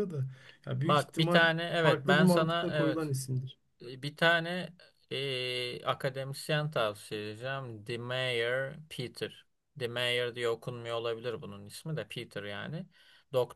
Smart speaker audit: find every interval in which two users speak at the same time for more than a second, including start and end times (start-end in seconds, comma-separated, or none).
0.8-3.1